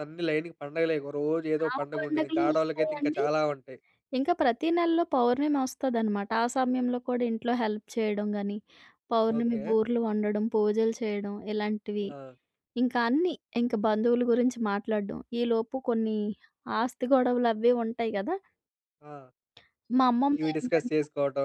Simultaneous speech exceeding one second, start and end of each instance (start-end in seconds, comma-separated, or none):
1.7-3.2